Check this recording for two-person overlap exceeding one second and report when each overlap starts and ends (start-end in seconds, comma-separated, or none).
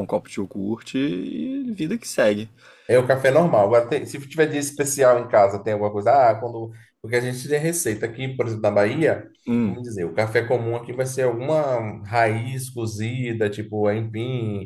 none